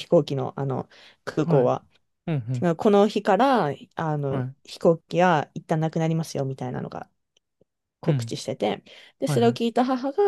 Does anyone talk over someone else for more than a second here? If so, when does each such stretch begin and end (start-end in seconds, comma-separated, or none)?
none